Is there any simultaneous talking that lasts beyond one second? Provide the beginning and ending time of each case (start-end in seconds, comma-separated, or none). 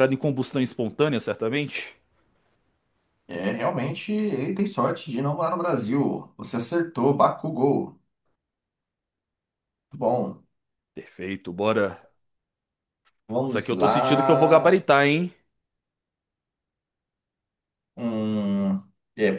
13.4-14.9